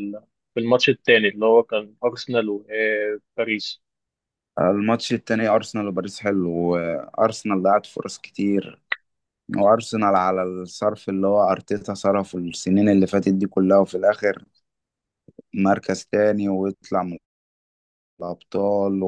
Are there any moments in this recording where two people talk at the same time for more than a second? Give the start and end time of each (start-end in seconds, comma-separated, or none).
none